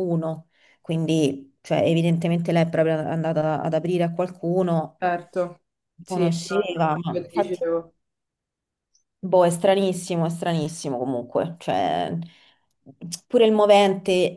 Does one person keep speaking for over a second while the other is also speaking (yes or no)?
yes